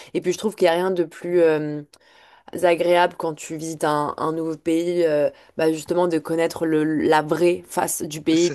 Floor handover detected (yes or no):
no